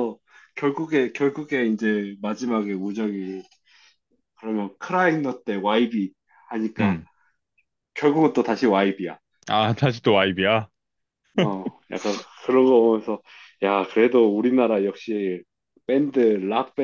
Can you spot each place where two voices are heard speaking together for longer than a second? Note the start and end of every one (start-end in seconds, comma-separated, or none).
none